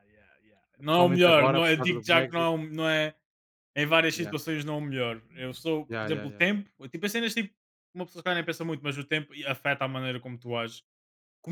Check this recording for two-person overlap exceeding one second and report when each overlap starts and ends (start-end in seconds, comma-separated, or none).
0.8-2.5